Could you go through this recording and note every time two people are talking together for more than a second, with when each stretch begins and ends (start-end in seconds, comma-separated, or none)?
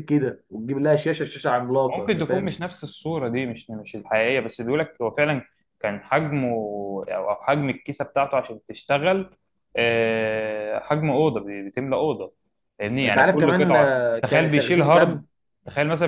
13.0-15.2